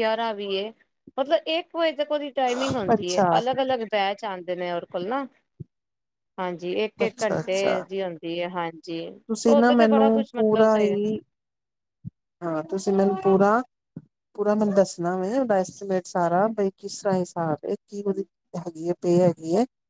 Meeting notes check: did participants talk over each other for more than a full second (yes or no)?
yes